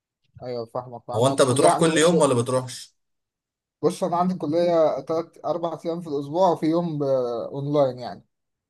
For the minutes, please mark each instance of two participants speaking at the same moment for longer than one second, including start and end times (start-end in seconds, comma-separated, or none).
1.1-2.4